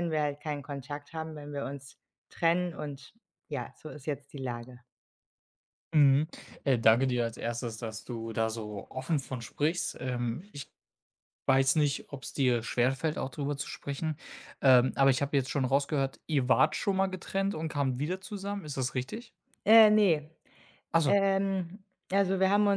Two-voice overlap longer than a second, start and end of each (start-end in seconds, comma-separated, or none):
none